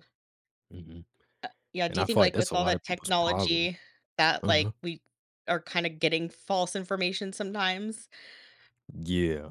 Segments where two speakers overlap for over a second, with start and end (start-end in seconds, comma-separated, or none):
1.9-3.7